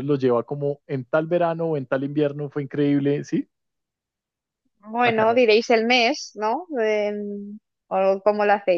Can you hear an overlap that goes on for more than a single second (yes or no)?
no